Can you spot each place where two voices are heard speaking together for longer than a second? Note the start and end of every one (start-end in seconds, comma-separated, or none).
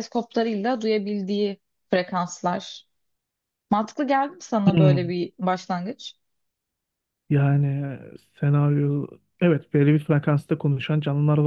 none